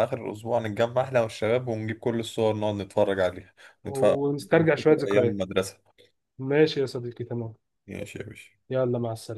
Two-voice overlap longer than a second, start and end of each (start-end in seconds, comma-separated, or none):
3.9-5.4